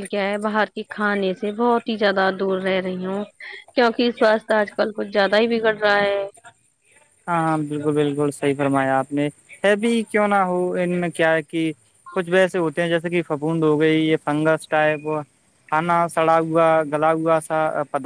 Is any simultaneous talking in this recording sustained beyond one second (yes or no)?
no